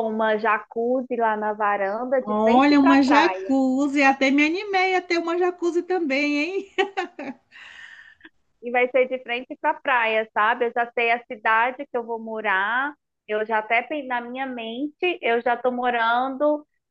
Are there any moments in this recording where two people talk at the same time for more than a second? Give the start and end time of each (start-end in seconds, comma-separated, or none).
2.2-3.5